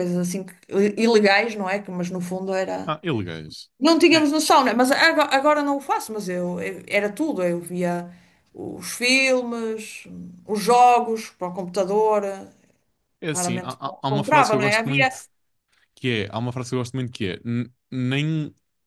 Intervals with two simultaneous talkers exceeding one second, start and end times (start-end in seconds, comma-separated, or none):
13.3-15.1